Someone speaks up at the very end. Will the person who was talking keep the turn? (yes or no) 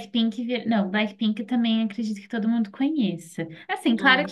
yes